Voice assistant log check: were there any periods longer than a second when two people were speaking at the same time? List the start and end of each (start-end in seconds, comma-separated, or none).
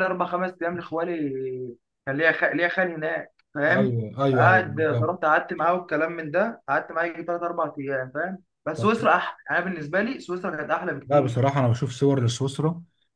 3.7-5.1